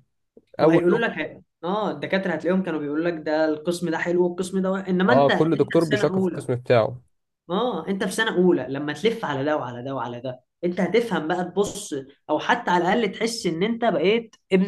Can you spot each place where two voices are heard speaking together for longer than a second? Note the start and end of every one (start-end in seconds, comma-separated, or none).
5.1-6.5